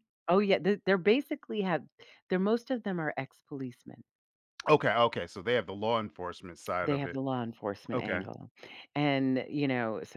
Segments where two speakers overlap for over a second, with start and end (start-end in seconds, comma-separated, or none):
none